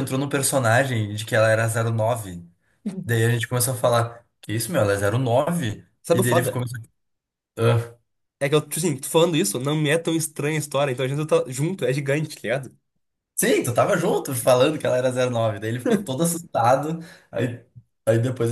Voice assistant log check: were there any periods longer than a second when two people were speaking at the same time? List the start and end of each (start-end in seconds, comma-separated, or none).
none